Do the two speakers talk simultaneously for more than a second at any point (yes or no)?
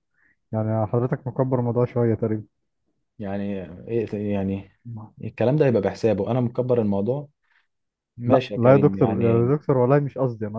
yes